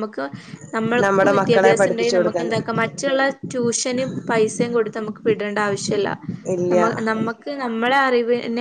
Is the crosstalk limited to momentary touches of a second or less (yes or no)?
no